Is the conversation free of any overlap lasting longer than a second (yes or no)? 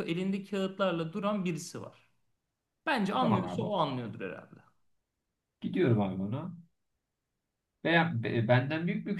yes